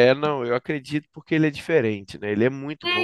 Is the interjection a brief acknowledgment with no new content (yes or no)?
no